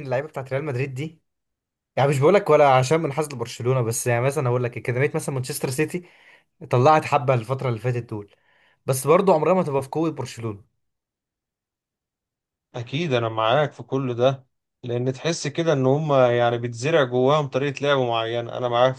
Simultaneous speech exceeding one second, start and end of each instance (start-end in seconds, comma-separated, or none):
none